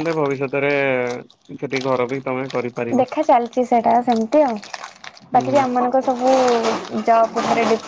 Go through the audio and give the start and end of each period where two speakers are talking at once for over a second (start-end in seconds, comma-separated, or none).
none